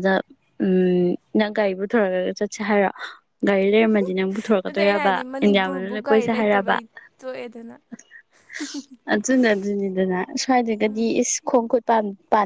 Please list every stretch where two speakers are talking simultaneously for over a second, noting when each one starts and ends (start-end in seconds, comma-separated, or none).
4.6-6.8